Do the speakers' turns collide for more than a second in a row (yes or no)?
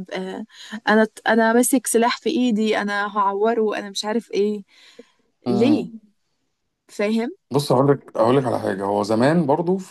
no